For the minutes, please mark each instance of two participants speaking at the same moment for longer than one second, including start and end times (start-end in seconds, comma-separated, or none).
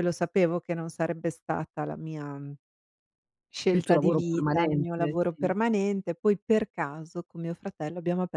3.7-5.5